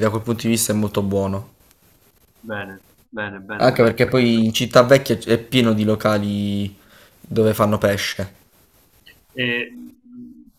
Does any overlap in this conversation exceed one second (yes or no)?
no